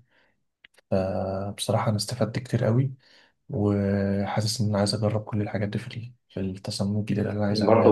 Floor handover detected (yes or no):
yes